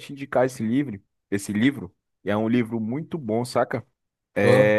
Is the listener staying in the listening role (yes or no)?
yes